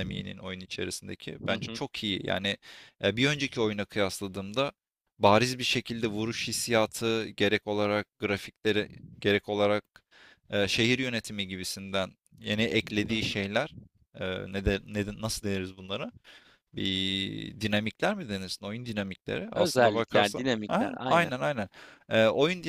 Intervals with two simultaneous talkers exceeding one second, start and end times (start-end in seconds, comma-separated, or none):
19.6-21.3